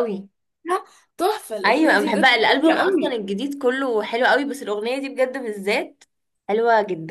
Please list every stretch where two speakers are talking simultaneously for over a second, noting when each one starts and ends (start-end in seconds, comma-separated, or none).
1.6-3.2